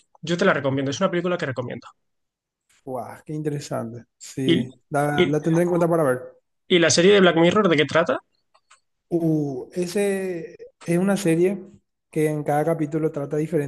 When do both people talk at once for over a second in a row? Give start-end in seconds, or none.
none